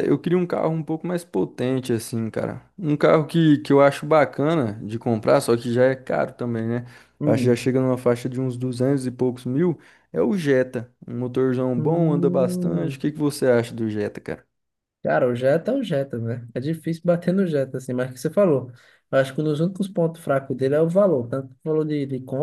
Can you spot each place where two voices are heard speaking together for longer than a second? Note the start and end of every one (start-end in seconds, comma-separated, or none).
11.8-13.0